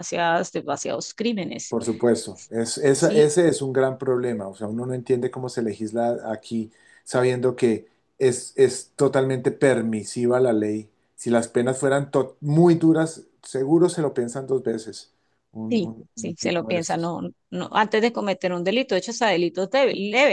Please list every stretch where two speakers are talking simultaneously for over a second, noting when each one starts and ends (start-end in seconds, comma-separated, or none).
15.7-17.1